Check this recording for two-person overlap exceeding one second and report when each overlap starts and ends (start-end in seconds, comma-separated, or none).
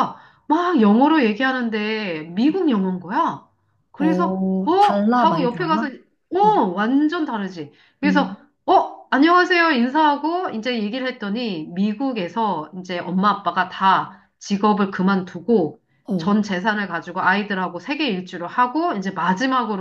4.0-5.9